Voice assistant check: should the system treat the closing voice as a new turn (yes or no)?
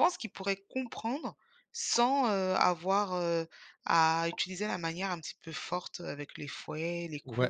yes